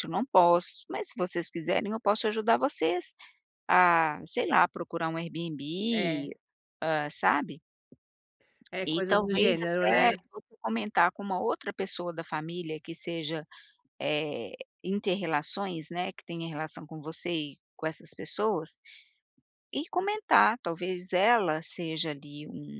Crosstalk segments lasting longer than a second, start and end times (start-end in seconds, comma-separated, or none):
8.8-10.2